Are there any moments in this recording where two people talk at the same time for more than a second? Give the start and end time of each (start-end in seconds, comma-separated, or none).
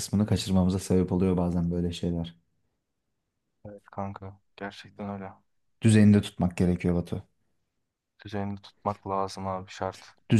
none